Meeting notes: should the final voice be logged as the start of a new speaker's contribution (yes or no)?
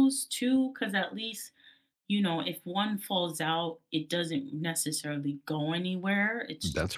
no